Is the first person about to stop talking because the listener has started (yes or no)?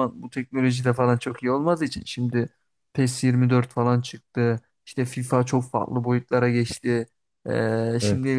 no